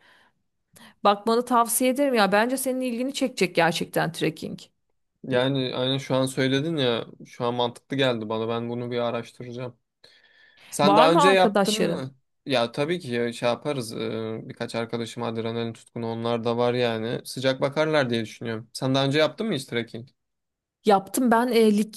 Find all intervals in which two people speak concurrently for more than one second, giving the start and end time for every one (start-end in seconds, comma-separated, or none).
10.8-12.1